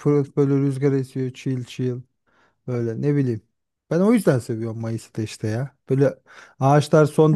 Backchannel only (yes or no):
yes